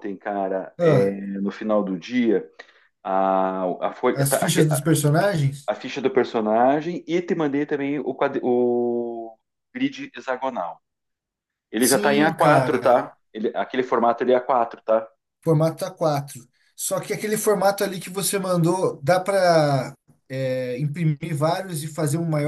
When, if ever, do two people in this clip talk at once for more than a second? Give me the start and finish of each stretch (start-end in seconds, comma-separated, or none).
11.8-13.1